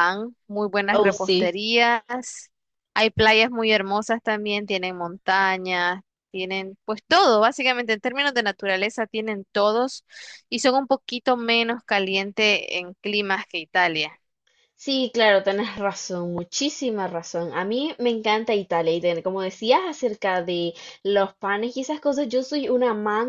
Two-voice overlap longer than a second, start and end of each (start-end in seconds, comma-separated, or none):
none